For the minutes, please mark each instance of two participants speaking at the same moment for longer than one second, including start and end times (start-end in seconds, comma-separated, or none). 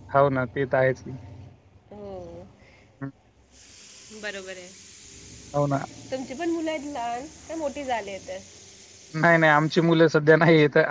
none